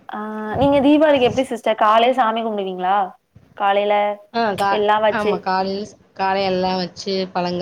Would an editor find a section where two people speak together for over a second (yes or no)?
no